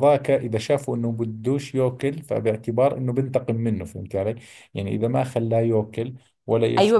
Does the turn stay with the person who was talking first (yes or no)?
no